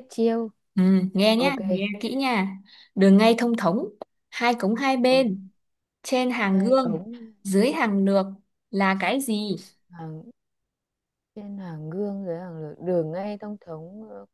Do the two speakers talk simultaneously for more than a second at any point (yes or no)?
no